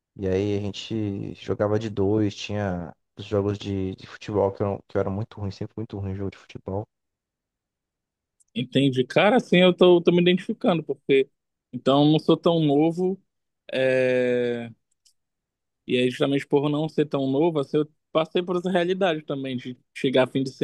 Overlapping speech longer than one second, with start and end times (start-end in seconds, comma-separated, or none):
none